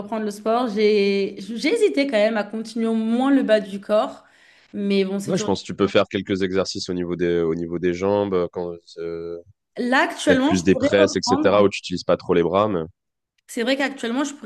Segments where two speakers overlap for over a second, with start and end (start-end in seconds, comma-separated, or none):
10.2-11.6